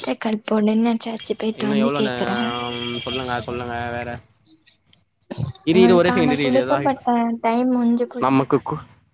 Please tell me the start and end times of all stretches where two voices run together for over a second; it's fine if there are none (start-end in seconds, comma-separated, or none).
5.8-7.1